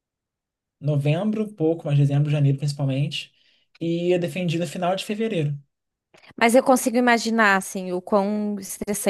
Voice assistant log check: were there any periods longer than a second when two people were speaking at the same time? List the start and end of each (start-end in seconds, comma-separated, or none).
none